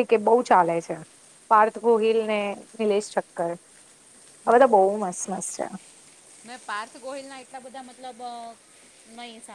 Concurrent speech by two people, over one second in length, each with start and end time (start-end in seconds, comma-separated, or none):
none